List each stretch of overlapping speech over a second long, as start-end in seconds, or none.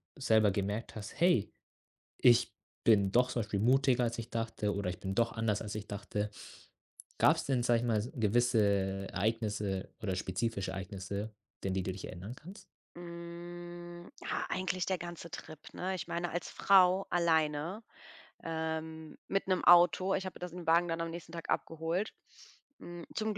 none